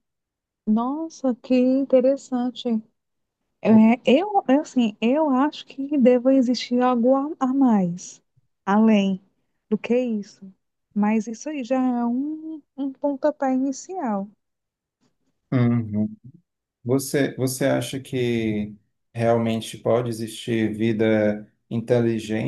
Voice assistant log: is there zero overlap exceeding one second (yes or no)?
yes